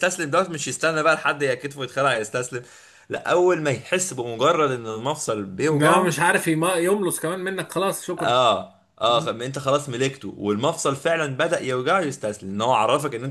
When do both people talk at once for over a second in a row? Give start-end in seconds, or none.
none